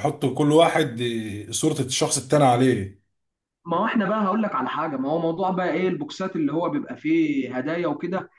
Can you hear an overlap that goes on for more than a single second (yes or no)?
no